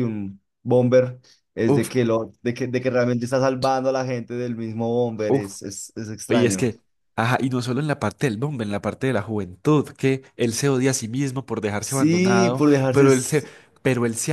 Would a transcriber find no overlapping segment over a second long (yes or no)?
no